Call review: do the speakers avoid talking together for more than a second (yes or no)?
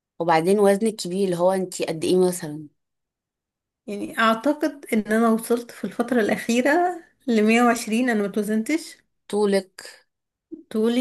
yes